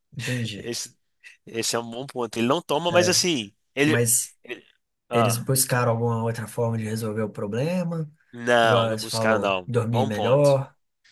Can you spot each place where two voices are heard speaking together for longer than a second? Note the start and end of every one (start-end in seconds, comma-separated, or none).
8.6-10.6